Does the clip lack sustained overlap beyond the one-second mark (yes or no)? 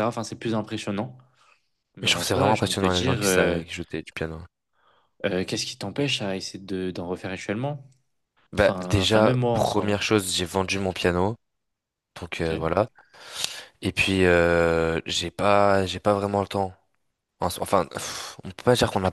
no